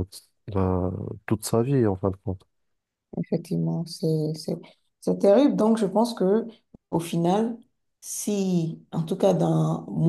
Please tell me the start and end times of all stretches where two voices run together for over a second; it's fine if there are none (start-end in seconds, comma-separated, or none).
none